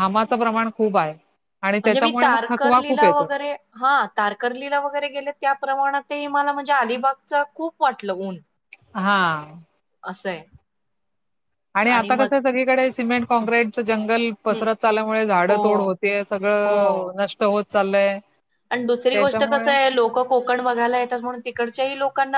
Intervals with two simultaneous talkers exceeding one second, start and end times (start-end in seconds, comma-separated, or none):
1.8-3.3